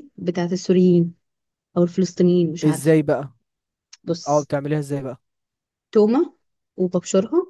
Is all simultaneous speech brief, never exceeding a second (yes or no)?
yes